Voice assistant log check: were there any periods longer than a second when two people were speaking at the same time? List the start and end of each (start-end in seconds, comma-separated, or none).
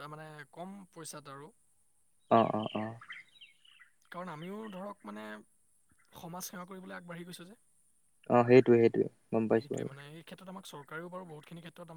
none